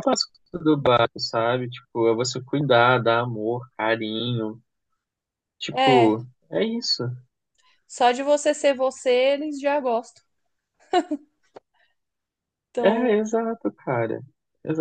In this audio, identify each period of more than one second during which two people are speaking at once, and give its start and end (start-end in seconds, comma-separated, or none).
none